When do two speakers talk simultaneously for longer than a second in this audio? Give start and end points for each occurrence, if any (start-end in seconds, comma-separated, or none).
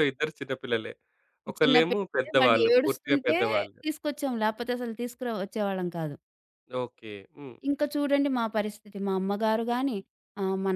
1.6-3.4